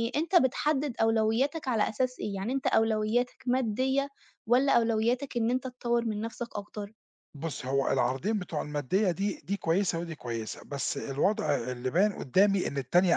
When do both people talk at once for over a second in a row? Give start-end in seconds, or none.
none